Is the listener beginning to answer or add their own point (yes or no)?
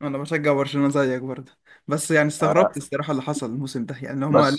yes